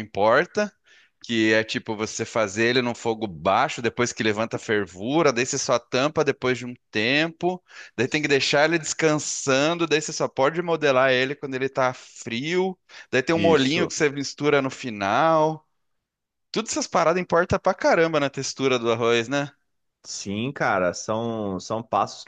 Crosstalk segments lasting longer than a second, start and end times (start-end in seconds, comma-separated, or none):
none